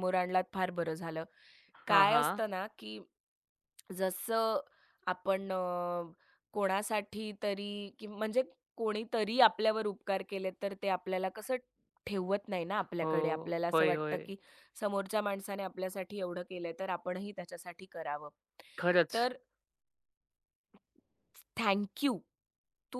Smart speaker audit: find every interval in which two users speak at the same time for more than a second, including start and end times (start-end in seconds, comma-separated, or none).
12.8-14.3